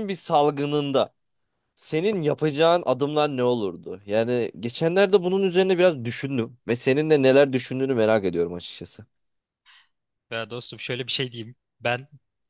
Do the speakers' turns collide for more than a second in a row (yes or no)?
no